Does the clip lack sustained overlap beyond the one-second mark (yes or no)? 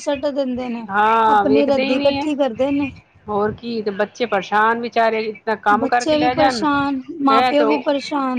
no